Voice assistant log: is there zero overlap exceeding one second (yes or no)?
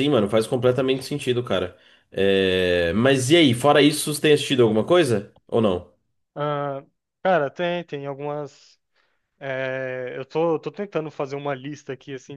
yes